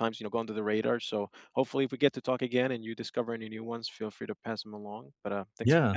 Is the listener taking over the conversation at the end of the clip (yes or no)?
yes